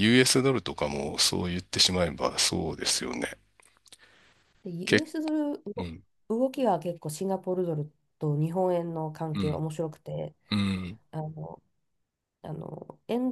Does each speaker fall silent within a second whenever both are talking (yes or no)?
yes